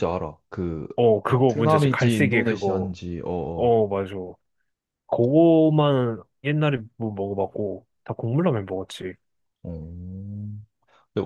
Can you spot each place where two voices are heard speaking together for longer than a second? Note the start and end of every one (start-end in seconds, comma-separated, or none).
1.2-2.9